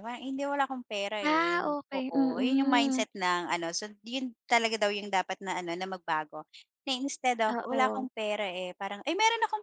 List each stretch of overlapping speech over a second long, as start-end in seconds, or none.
1.2-3.0